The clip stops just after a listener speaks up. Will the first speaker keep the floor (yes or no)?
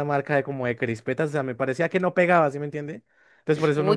no